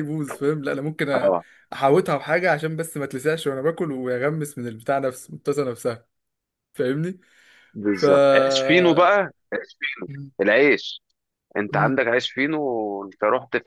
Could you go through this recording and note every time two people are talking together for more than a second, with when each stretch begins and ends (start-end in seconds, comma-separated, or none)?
none